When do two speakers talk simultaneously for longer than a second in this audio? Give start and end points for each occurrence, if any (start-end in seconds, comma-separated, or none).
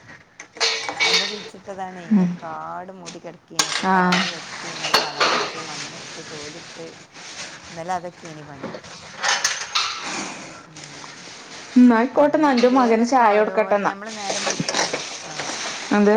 12.2-13.9